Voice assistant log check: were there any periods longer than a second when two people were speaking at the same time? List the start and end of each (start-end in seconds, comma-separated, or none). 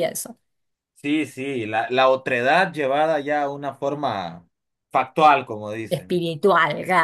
none